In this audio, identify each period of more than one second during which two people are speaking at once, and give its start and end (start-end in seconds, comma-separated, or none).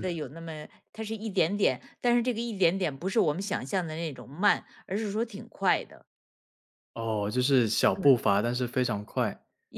none